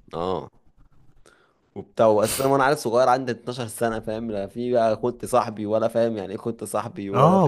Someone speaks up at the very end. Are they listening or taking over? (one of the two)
taking over